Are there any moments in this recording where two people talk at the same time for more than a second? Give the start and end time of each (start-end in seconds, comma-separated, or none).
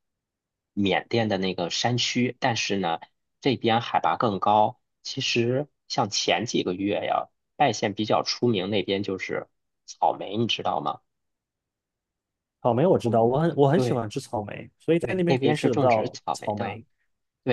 15.0-16.8